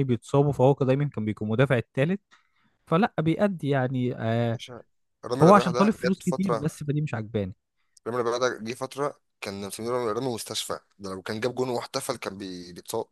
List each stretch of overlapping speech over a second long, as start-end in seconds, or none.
5.4-6.7